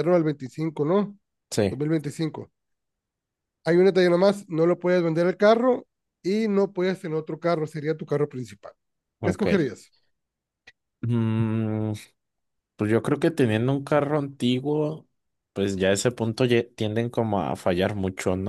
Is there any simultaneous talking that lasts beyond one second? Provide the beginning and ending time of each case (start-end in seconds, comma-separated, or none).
none